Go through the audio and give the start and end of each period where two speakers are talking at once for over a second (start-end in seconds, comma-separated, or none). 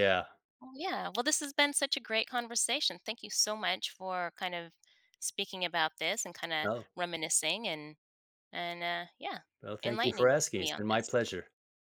9.8-11.2